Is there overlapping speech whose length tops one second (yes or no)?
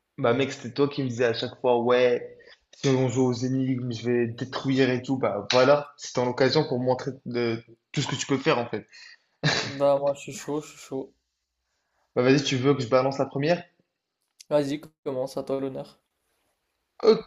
no